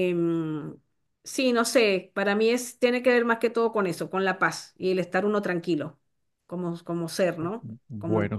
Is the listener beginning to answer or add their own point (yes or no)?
yes